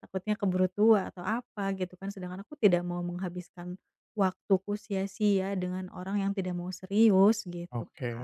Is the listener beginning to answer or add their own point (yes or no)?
yes